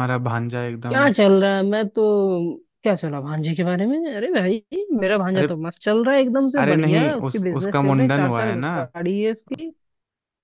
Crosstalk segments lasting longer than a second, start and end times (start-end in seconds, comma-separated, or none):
6.6-8.7